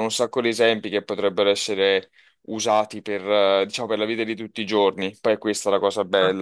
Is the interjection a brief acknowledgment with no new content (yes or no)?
no